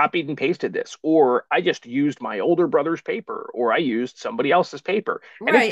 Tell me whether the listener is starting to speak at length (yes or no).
yes